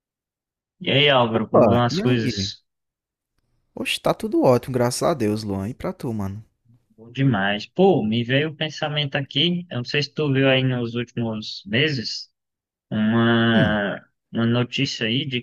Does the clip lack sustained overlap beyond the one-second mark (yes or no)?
no